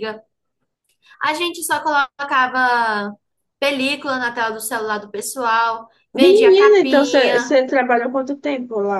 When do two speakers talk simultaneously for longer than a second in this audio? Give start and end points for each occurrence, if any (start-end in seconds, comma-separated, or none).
6.1-7.5